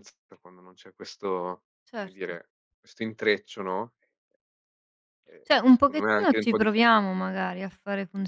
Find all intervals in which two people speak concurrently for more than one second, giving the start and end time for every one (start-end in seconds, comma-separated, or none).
5.4-7.0